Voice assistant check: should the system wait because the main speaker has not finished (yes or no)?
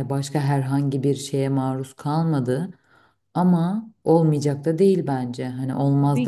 no